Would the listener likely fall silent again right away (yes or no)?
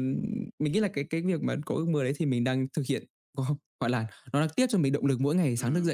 no